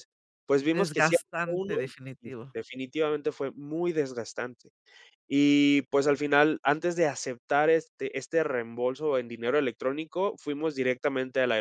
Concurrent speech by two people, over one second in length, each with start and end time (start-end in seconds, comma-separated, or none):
0.7-1.9